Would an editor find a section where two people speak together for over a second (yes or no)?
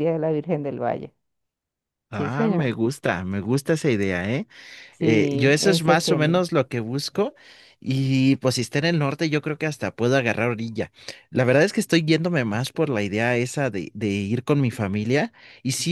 yes